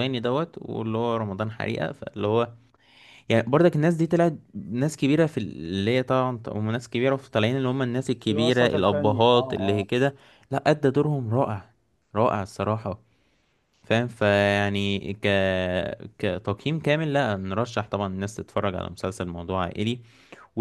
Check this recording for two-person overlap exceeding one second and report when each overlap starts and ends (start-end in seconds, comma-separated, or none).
8.3-9.8